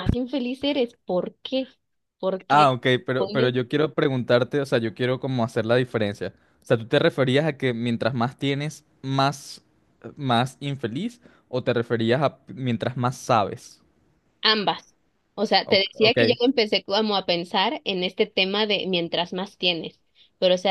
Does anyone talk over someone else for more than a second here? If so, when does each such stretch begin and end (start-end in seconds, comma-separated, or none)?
none